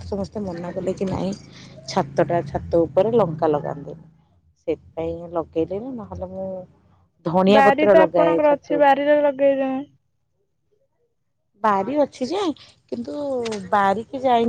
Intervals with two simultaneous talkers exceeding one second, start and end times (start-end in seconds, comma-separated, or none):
7.5-9.0